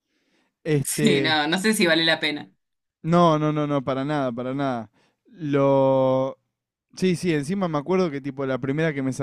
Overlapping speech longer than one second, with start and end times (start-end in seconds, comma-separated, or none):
none